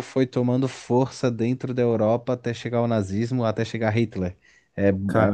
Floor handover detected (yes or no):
no